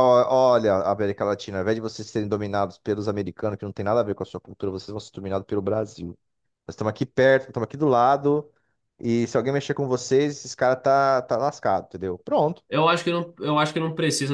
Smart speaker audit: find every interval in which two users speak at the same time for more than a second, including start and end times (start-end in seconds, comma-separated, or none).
none